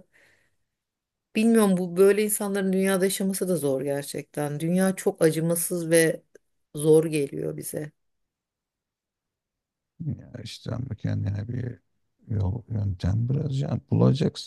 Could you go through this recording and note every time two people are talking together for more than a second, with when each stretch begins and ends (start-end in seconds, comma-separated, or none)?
none